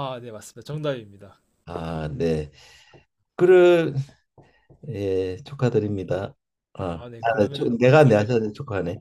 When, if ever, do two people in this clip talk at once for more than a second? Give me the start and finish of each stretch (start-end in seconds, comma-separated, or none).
6.9-8.4